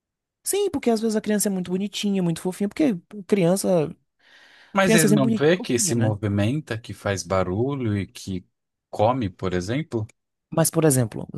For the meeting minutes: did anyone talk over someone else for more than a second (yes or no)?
yes